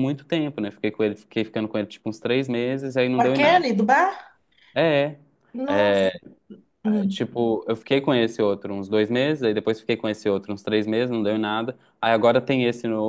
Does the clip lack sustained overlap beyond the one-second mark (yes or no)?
yes